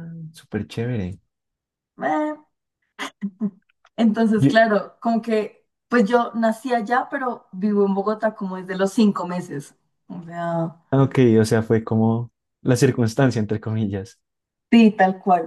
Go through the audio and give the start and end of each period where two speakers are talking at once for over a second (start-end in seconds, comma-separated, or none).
none